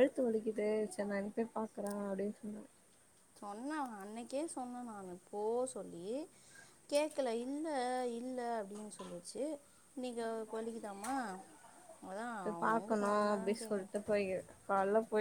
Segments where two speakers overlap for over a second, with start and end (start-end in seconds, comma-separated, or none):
none